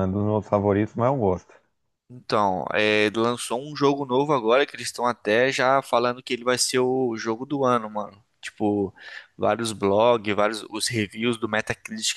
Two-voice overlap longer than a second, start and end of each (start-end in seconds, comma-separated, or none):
none